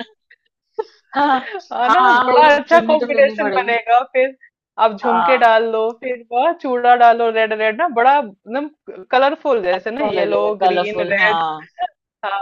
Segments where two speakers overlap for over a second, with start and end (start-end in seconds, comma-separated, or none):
1.9-3.8, 9.8-11.4